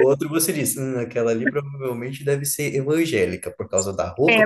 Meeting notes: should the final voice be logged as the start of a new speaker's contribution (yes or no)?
yes